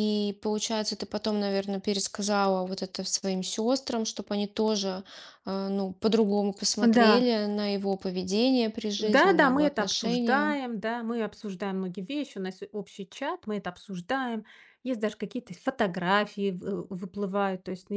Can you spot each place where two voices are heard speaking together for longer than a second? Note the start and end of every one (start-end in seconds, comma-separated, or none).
9.0-10.6